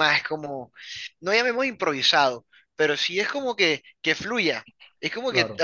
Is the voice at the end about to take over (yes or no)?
no